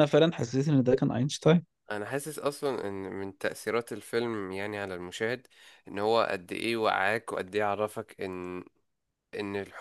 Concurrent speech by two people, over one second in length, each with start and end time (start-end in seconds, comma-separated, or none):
none